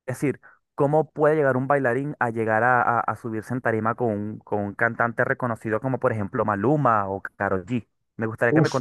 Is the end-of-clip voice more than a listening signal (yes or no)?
no